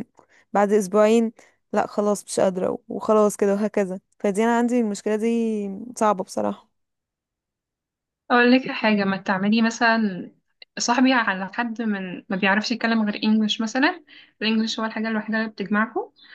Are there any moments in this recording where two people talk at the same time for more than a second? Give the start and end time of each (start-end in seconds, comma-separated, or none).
none